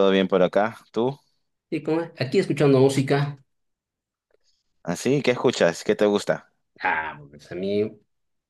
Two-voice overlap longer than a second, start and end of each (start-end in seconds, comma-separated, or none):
none